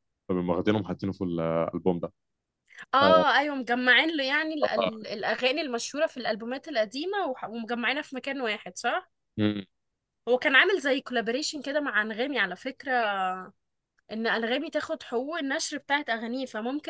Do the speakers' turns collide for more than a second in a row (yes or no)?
no